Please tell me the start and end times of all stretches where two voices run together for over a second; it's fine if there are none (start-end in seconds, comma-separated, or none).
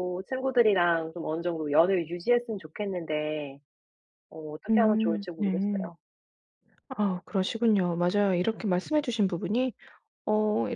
4.7-5.9